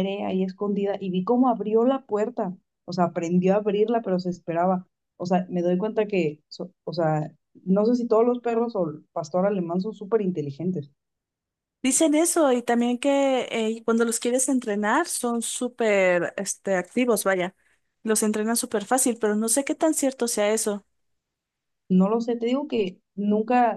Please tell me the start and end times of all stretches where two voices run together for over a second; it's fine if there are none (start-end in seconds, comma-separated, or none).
none